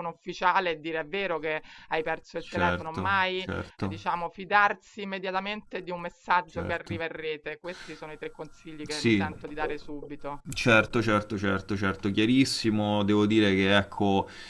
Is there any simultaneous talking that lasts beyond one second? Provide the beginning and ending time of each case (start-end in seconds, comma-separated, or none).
2.4-4.0